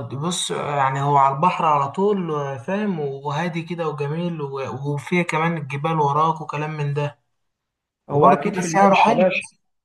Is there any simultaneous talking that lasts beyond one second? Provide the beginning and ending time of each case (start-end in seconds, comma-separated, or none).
8.1-9.3